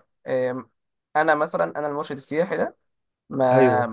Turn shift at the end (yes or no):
no